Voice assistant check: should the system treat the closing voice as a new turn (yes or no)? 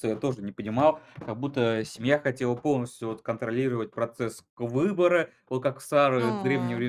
no